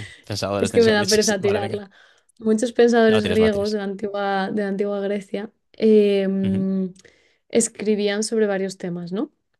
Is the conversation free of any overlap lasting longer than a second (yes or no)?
no